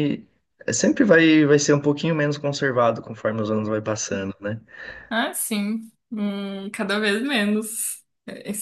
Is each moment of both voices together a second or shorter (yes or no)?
yes